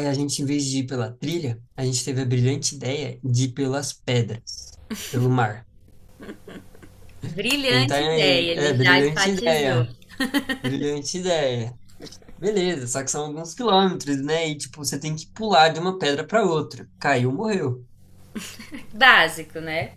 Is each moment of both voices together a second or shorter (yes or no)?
no